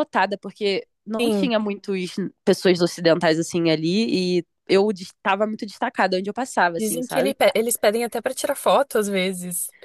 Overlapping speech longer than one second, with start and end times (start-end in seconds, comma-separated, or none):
none